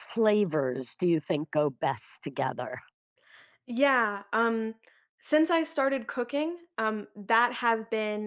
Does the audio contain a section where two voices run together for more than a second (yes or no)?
no